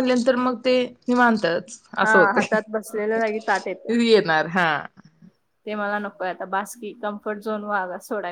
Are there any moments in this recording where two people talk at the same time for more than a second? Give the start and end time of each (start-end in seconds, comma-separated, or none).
2.0-3.9